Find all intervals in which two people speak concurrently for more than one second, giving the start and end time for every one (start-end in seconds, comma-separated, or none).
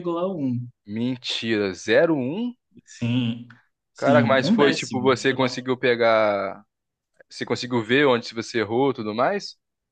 4.0-5.6